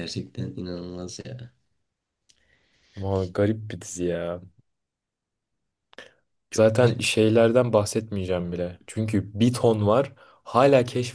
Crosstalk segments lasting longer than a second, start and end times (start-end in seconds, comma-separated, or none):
none